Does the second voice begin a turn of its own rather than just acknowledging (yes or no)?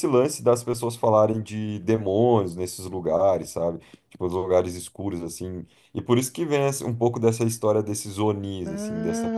no